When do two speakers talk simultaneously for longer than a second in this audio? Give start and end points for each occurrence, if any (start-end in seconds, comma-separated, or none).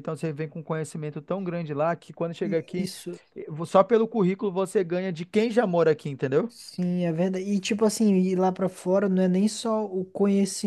none